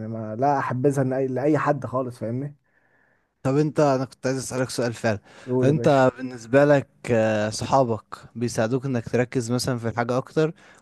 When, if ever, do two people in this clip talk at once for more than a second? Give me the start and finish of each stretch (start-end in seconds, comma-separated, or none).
none